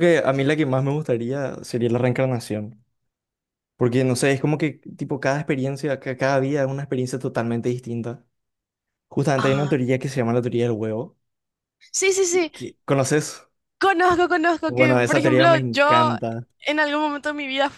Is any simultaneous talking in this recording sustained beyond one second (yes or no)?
yes